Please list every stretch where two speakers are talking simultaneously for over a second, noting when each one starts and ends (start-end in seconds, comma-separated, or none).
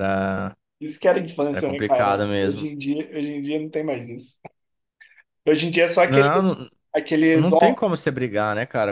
1.5-2.7